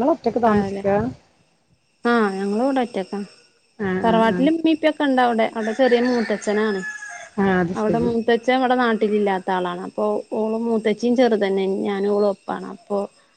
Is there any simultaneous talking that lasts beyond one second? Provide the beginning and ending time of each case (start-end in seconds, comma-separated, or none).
none